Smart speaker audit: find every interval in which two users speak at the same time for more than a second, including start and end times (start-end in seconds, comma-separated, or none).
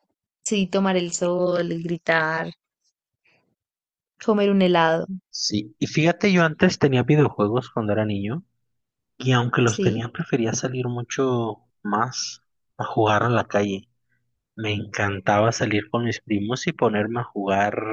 none